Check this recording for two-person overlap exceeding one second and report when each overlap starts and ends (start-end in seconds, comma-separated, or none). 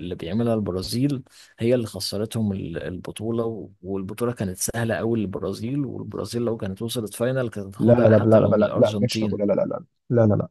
7.8-9.4